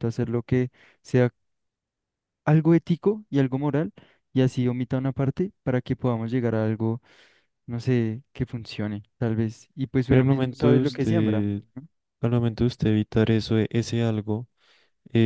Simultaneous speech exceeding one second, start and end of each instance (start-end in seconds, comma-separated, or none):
10.1-11.4